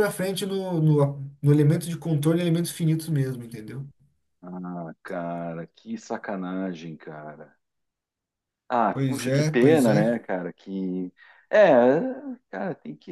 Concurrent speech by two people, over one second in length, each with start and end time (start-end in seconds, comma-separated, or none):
8.9-10.1